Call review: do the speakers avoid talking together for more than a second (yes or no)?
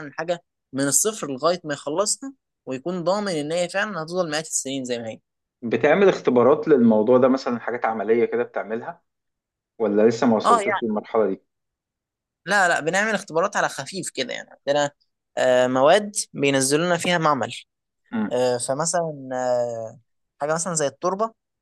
yes